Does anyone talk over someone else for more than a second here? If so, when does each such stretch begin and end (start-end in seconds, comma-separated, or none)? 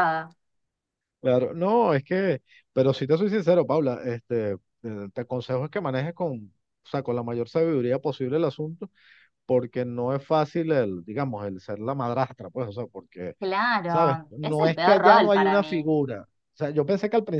13.8-15.9